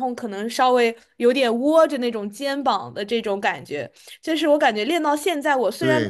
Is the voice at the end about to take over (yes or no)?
yes